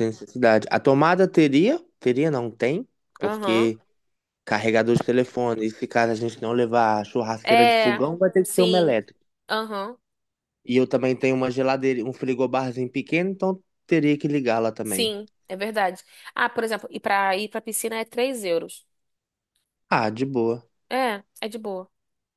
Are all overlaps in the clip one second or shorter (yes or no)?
no